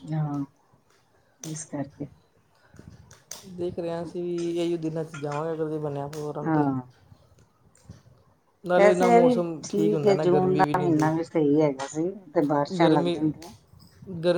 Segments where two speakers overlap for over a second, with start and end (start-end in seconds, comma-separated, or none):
8.8-11.1